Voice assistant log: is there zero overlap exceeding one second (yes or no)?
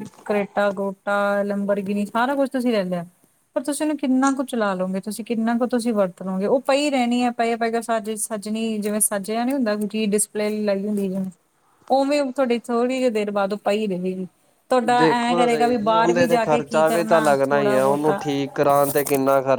no